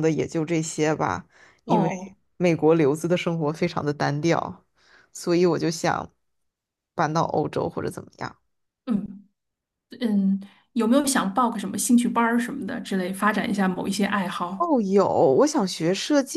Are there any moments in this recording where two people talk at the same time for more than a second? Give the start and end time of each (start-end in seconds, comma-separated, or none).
none